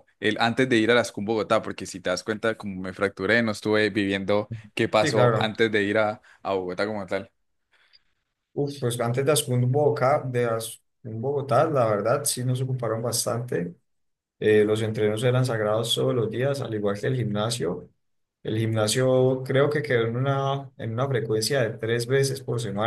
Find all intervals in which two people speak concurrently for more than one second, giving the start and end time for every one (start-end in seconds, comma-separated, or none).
none